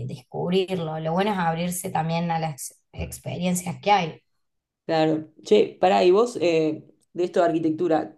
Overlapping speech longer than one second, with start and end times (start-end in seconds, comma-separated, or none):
none